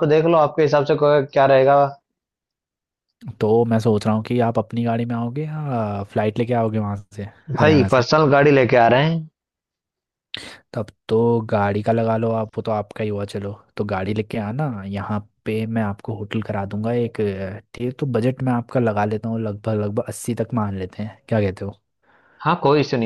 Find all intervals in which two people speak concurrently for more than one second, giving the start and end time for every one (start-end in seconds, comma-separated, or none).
none